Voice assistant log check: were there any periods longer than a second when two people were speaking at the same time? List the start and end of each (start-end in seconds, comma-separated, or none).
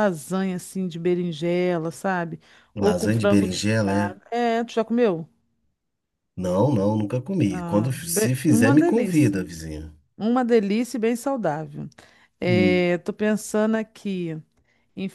2.8-4.2, 7.5-9.5